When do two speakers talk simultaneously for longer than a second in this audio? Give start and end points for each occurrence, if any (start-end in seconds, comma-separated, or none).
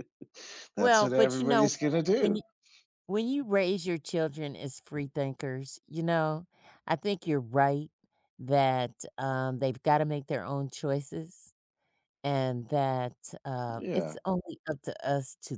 0.8-2.4